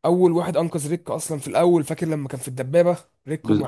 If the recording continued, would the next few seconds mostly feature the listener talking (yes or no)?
yes